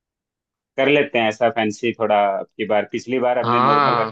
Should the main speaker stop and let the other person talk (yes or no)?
no